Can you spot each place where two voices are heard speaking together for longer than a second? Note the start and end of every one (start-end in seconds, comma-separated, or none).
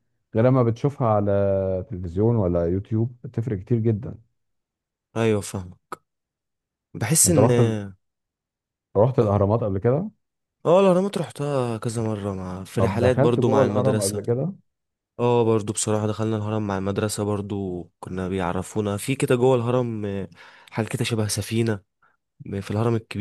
12.8-14.2